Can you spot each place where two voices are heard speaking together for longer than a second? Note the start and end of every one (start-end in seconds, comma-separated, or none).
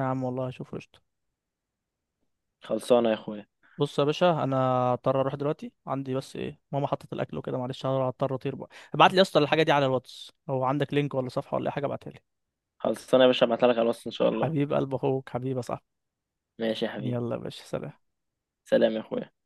none